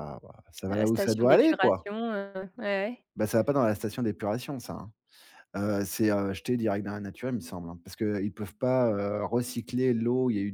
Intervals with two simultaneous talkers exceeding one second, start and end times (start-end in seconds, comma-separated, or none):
0.7-1.9